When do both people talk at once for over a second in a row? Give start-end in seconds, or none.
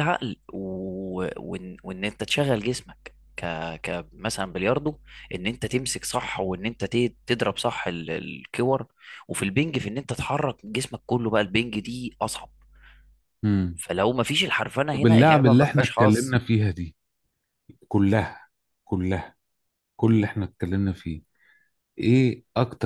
14.9-16.4